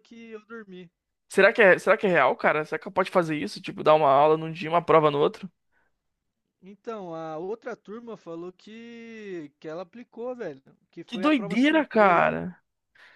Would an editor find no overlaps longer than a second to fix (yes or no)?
no